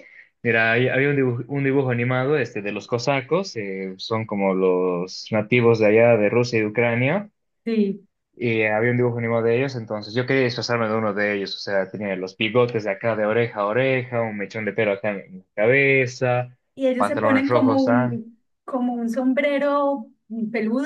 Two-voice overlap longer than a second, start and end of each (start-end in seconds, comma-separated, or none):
17.0-18.2